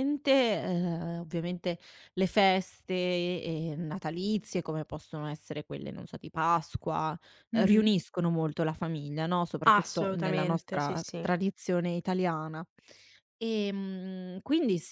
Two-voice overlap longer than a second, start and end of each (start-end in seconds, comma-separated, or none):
9.6-11.3